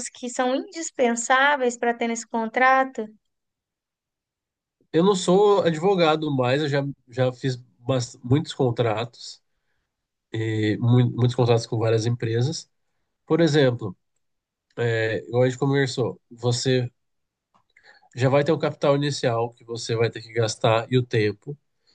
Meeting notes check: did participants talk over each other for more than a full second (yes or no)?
no